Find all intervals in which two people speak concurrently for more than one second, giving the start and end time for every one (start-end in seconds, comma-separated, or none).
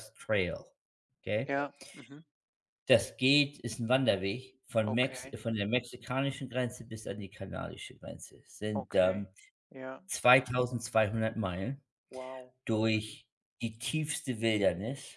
none